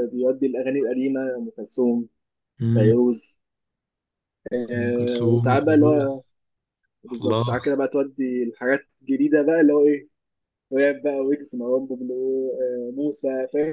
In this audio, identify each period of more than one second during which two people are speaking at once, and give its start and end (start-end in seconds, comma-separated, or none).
4.7-6.2